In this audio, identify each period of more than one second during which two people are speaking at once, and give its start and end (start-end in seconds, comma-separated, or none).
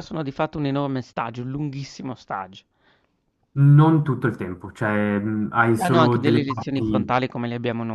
5.8-7.2